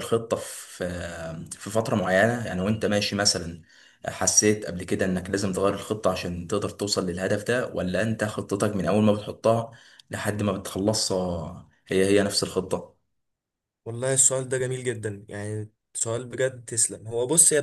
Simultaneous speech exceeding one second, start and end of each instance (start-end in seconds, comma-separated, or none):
none